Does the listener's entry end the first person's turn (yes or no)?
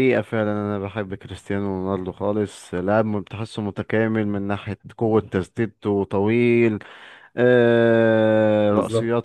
no